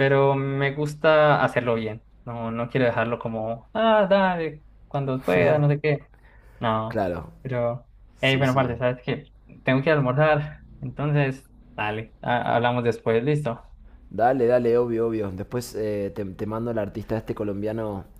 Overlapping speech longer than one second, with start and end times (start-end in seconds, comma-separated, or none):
none